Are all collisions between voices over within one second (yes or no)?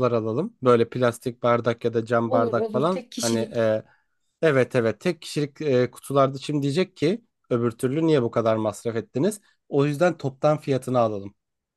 no